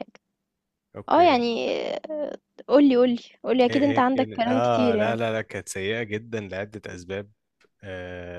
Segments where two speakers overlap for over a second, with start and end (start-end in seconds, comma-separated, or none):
3.7-5.2